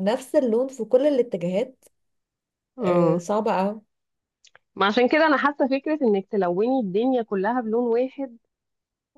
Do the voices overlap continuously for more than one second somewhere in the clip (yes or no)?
no